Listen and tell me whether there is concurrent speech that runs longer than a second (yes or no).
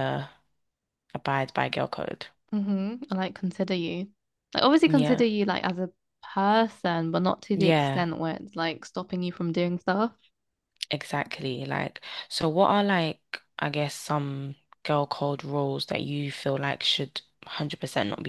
no